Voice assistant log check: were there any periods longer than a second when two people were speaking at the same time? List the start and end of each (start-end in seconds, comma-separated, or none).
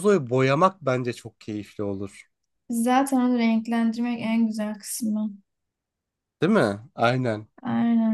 none